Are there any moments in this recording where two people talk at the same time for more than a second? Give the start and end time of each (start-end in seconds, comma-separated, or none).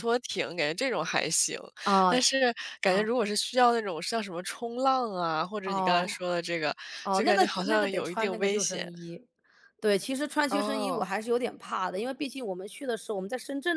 7.1-8.9